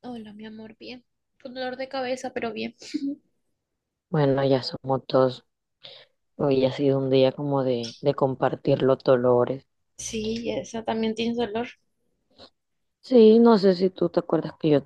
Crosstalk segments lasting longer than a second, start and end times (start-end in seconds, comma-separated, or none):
none